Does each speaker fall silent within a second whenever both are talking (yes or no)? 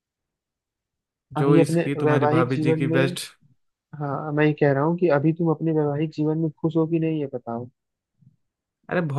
no